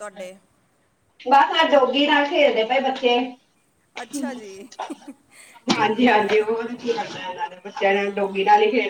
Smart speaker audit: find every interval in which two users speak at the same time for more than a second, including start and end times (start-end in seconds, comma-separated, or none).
none